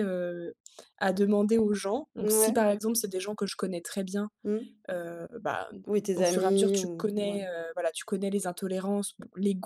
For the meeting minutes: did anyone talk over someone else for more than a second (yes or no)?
yes